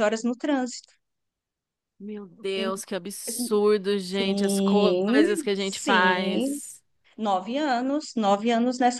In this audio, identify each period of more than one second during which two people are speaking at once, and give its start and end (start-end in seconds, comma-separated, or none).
4.1-6.6